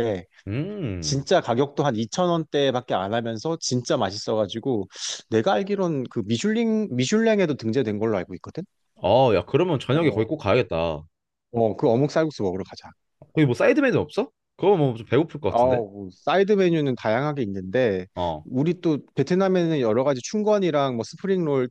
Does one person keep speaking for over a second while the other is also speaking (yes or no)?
no